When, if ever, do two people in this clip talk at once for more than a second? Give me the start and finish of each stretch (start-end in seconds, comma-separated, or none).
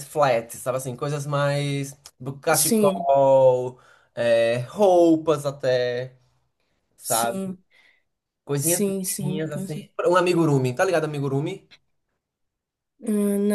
8.6-9.9